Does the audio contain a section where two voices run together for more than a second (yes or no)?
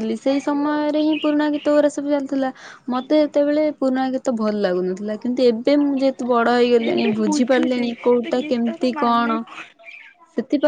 yes